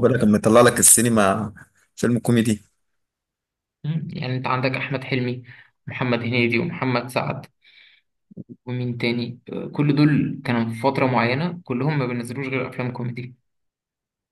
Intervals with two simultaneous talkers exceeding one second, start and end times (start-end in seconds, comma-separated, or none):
none